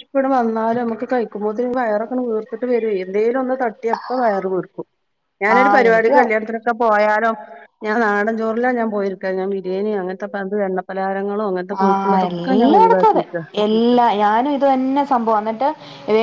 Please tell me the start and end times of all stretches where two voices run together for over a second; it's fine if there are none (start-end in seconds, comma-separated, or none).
11.8-13.2